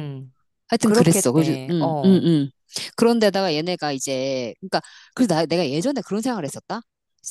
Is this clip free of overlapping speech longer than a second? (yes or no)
no